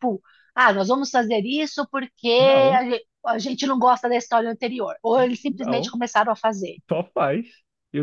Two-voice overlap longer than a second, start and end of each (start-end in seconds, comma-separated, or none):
none